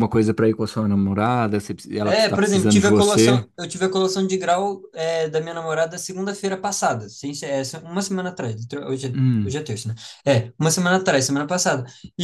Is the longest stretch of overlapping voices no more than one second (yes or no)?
no